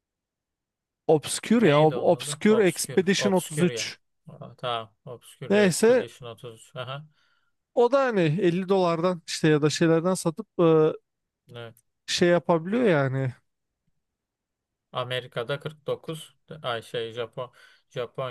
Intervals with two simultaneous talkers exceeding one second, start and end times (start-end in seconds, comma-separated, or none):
1.6-3.9